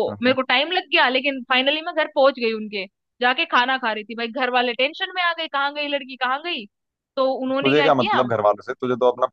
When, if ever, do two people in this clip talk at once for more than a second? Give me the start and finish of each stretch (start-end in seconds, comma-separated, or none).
none